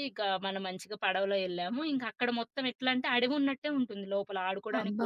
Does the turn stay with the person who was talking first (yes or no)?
no